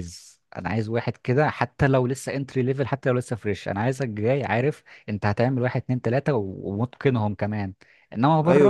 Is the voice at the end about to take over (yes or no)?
no